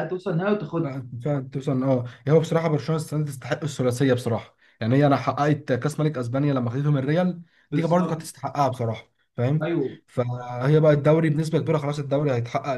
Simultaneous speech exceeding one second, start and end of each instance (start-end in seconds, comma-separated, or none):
none